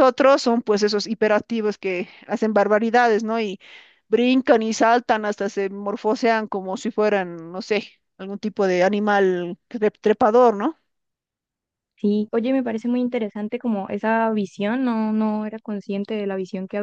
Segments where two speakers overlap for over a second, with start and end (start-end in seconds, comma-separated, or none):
none